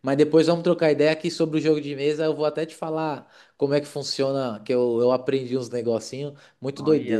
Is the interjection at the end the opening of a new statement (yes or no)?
yes